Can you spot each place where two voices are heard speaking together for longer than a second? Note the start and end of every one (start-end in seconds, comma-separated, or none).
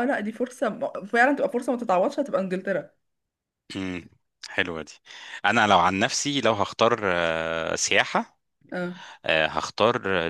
none